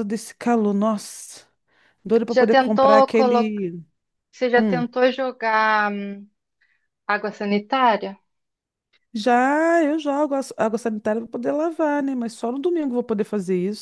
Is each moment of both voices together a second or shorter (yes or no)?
no